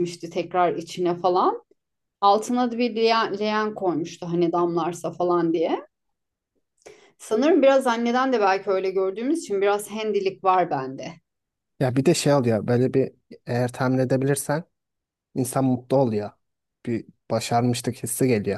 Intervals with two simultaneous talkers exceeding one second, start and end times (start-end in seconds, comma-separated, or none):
none